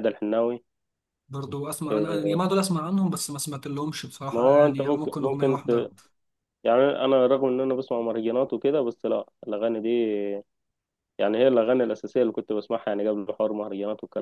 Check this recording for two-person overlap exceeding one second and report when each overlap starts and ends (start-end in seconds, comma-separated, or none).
4.3-5.9